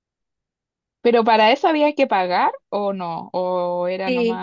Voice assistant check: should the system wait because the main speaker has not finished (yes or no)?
no